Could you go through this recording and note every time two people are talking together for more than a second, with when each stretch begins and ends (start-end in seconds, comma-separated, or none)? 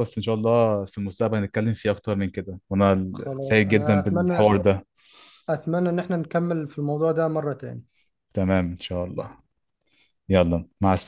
3.1-4.5